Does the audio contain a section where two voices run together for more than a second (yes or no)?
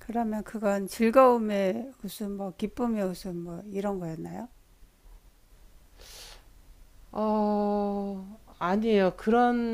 no